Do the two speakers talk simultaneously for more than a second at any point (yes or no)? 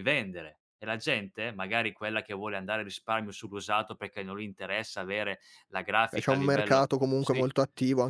yes